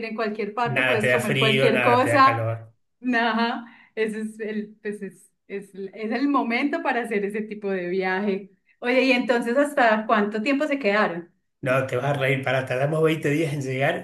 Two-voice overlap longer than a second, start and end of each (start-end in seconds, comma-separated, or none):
0.6-2.5